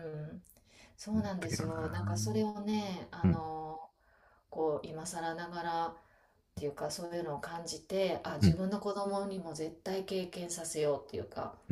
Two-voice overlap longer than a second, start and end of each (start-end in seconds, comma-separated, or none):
1.1-2.5